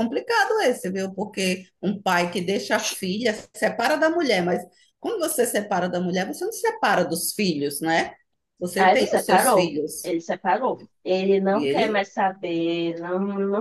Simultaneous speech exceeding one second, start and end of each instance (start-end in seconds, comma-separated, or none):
8.8-10.1